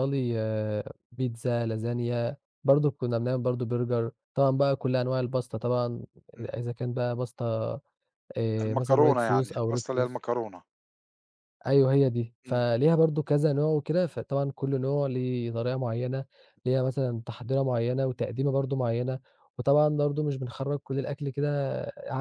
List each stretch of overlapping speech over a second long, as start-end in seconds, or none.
8.6-10.2